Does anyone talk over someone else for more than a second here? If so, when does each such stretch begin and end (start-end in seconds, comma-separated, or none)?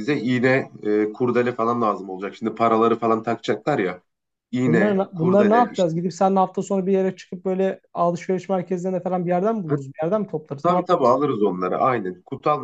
4.7-5.9